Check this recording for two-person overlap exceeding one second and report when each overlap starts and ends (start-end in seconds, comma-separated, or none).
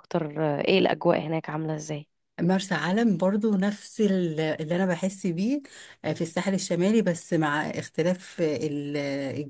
none